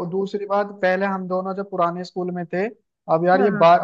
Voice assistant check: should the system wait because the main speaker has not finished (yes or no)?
yes